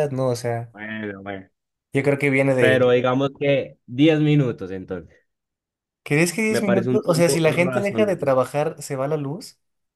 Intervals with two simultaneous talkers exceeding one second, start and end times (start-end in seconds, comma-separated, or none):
6.5-8.3